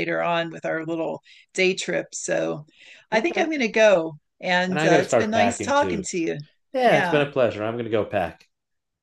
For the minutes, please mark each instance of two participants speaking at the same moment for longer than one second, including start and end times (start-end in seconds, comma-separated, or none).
4.7-6.0